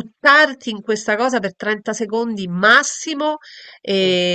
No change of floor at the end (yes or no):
yes